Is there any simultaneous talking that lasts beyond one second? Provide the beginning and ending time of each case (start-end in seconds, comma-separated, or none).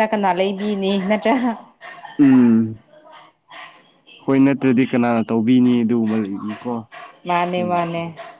none